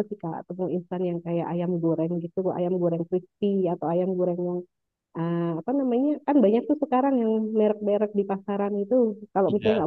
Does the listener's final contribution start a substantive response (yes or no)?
no